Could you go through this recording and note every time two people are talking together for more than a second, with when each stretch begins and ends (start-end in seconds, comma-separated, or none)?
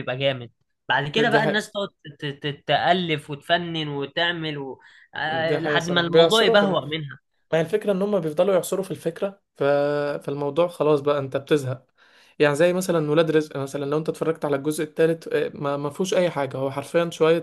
5.3-6.7